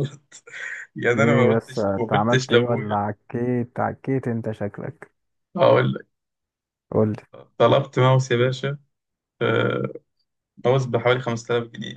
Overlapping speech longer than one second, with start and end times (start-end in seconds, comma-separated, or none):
1.2-3.1